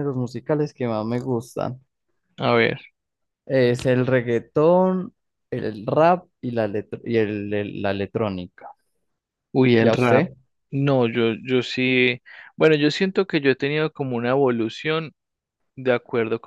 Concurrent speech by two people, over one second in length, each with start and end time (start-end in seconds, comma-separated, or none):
none